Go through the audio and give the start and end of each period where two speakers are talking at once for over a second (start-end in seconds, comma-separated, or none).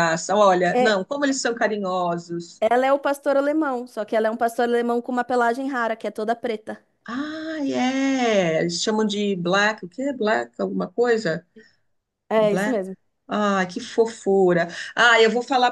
none